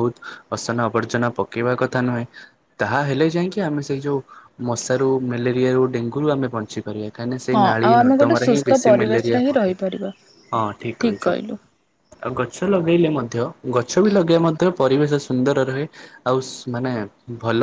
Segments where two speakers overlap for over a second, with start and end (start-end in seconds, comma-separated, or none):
7.5-9.8